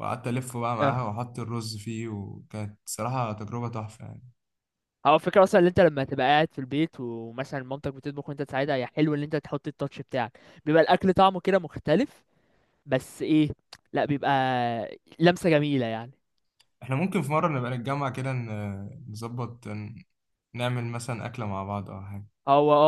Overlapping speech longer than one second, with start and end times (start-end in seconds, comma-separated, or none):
none